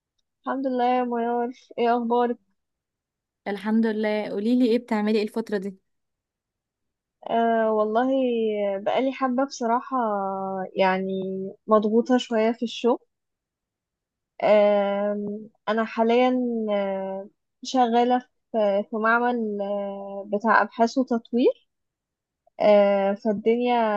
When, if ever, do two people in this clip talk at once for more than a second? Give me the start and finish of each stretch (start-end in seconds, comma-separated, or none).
none